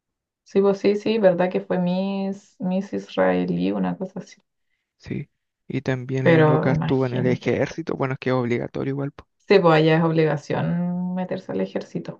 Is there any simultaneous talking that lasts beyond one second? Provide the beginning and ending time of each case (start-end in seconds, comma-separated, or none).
6.2-7.8